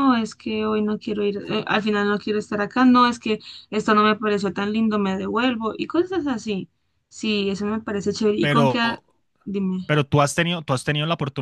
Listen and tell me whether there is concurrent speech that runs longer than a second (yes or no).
no